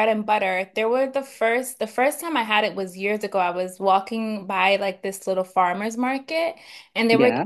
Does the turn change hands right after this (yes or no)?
no